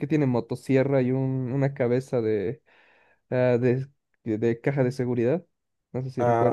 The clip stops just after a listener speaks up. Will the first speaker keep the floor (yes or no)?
no